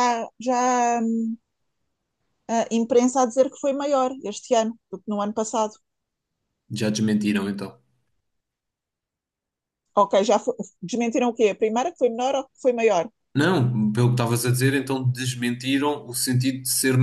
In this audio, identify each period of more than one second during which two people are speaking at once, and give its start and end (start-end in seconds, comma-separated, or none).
none